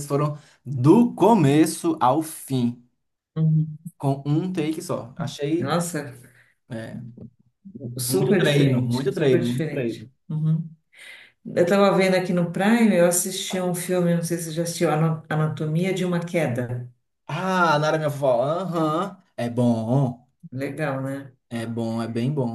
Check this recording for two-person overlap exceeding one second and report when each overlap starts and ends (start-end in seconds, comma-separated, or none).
8.1-10.1